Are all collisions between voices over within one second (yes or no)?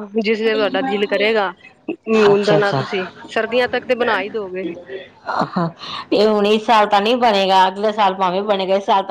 yes